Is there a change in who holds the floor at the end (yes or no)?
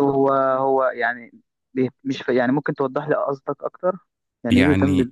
yes